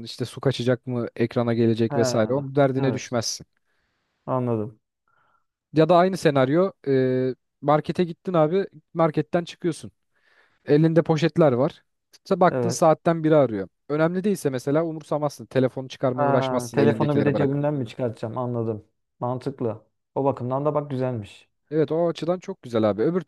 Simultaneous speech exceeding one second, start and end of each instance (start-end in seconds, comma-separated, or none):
16.1-17.6